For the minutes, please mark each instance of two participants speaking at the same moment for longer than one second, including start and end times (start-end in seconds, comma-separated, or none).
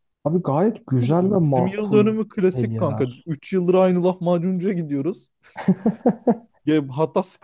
1.2-3.3